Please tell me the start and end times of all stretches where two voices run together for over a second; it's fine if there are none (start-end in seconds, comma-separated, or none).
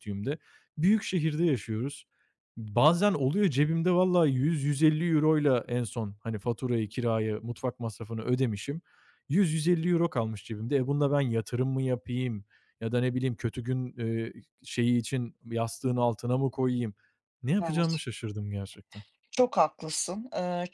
none